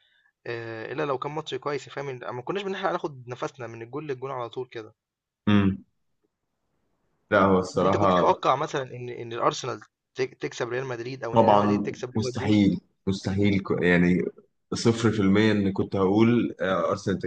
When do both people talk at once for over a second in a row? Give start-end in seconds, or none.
11.3-12.6